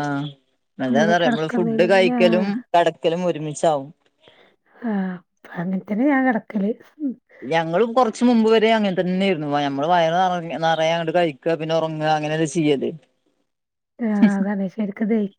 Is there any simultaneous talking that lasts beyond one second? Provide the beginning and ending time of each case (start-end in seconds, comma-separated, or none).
1.2-2.5